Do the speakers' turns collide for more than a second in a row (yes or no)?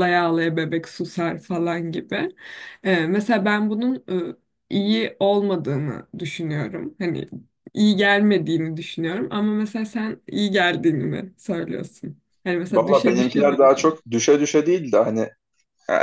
yes